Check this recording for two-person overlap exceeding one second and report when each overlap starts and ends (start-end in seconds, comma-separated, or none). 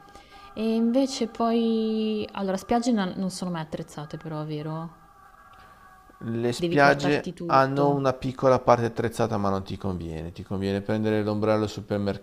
6.6-8.0